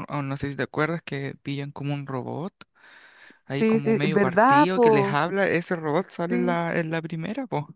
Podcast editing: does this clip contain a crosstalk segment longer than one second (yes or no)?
yes